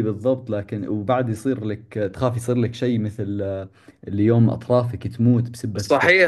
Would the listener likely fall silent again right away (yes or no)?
no